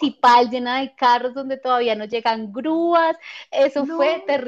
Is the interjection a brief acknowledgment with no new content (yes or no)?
yes